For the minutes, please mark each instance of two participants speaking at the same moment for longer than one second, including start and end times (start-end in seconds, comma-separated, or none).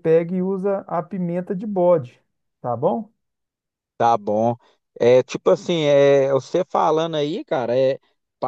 none